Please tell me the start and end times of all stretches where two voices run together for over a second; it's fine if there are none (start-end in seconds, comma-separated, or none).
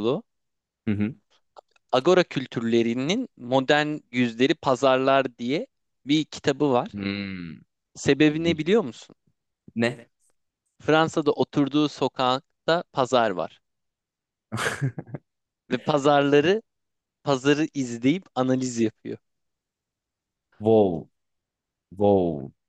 none